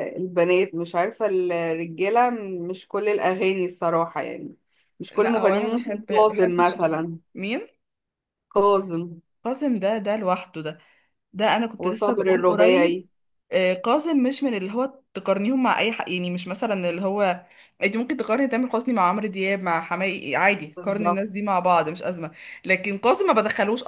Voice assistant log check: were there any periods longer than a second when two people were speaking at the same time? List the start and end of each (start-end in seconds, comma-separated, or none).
5.1-7.2, 11.8-13.1